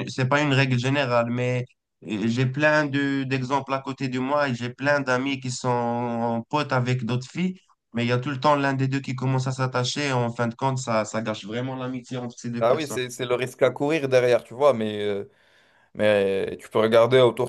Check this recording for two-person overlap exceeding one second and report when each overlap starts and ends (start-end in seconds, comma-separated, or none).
none